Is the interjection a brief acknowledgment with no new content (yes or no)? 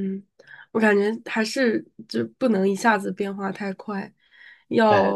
yes